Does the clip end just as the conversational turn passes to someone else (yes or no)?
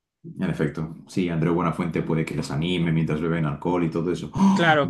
yes